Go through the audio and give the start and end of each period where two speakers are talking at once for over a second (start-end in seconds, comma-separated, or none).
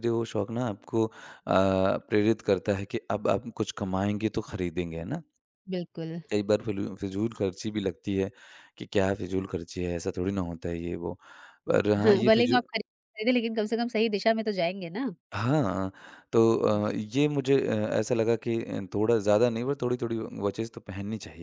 none